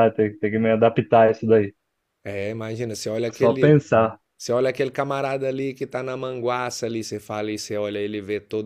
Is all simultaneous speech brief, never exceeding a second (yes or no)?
yes